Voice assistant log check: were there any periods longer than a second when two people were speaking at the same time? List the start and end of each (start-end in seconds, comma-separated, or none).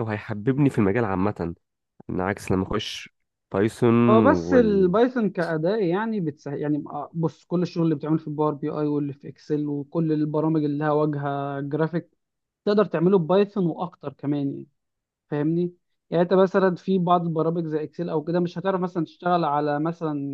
none